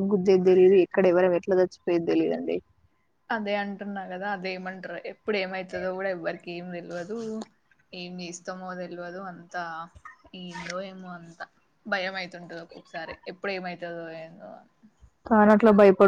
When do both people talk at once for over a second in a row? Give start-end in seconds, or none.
none